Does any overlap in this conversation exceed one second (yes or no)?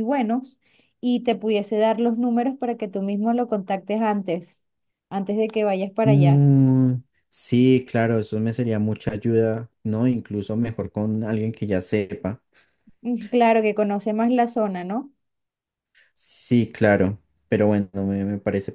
no